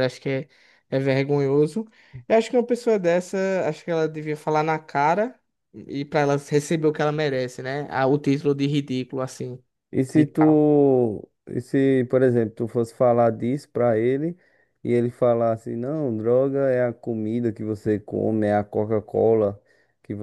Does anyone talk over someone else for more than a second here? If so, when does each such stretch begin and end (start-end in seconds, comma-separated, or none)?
none